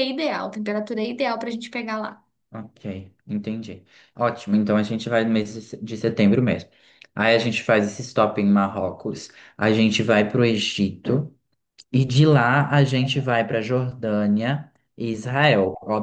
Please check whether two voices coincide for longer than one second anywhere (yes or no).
no